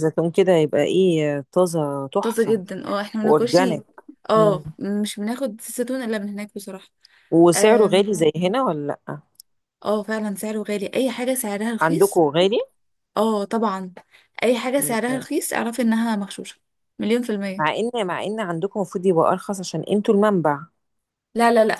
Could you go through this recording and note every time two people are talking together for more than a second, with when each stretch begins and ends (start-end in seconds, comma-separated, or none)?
none